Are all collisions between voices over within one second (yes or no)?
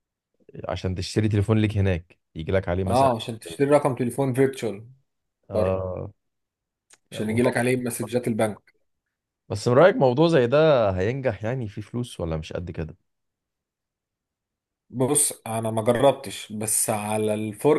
yes